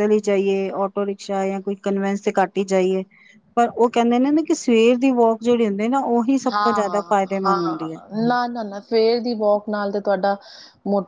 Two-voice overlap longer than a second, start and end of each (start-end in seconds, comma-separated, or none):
none